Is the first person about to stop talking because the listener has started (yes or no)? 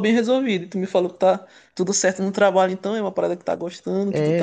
yes